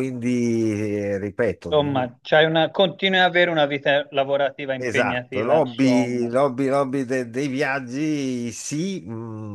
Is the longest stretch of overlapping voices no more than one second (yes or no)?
no